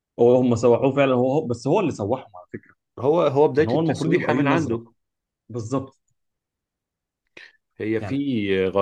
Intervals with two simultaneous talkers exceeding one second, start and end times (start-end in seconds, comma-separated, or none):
3.5-4.8